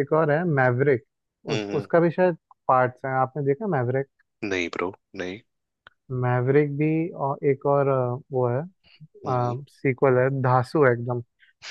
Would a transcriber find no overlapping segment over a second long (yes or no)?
yes